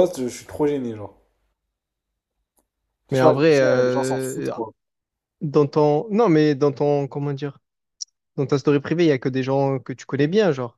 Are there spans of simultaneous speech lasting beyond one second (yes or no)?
yes